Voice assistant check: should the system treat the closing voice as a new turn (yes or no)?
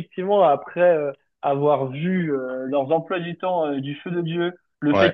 no